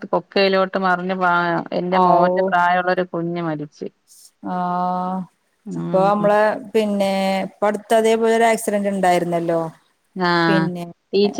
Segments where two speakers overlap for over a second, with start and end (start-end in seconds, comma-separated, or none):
none